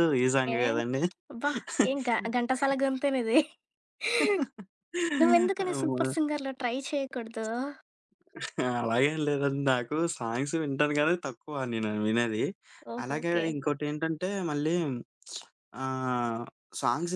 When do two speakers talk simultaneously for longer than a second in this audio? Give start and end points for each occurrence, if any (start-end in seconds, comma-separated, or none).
none